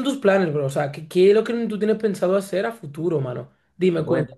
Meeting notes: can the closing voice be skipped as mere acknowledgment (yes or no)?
yes